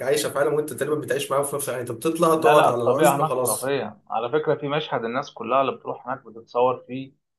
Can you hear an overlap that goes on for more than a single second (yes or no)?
yes